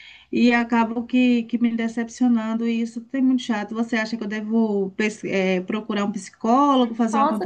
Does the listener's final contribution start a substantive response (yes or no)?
yes